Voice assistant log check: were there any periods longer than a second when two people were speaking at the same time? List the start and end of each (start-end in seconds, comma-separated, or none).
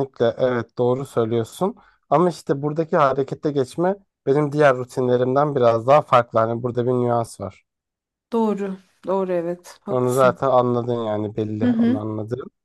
none